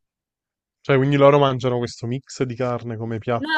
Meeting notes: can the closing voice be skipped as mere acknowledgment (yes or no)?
no